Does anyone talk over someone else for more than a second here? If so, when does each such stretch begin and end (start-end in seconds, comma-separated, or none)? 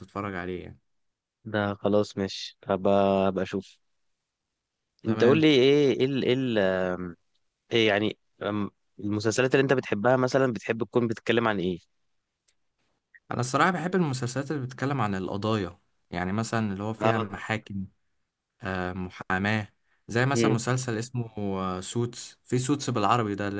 none